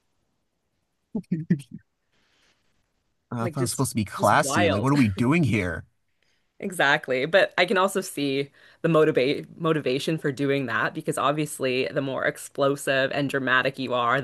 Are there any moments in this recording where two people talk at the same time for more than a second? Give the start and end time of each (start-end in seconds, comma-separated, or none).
3.4-4.9